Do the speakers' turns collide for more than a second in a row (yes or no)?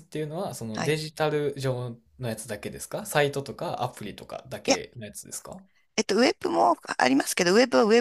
no